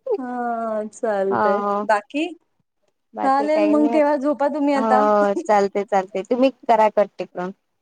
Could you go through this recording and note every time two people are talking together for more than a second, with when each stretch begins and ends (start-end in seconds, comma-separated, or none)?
none